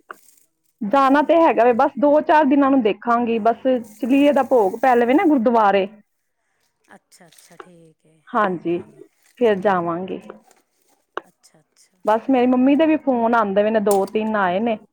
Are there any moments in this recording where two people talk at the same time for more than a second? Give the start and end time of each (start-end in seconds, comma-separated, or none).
none